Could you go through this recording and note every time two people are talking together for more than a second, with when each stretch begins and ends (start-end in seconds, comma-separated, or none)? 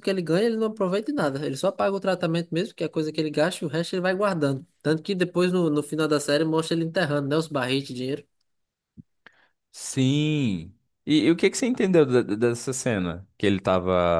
none